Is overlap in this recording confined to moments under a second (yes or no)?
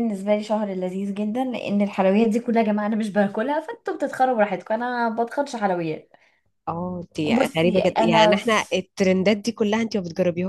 no